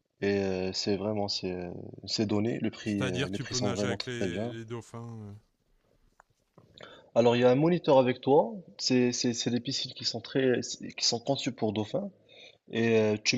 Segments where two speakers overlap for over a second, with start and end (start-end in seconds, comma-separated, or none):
2.8-4.5